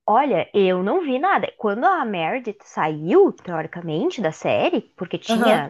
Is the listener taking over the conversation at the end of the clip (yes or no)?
no